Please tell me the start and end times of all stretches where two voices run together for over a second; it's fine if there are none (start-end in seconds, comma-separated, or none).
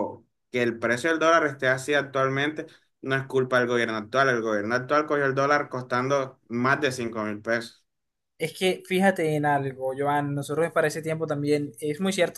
none